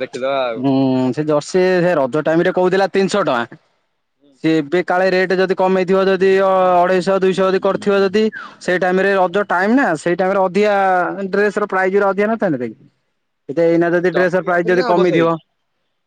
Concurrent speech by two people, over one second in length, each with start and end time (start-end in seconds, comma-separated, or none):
13.6-15.3